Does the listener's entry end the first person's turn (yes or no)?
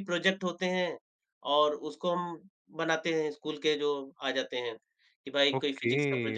yes